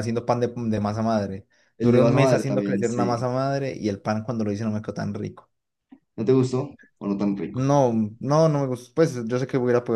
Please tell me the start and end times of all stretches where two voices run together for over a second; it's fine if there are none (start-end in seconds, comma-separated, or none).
1.8-3.3